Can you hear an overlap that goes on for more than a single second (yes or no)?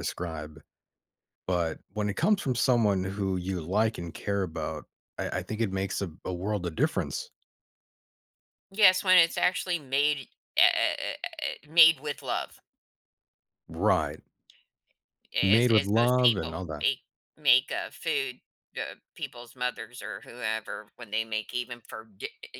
yes